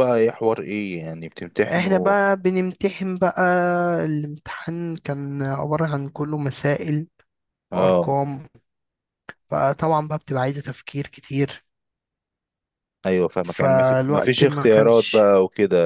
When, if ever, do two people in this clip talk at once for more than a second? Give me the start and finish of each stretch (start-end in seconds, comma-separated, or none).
13.4-15.2